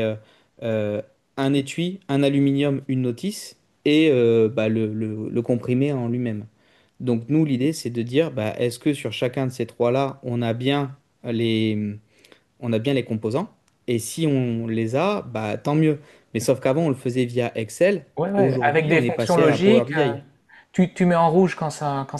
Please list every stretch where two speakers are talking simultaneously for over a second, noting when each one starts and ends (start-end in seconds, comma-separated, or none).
18.2-20.2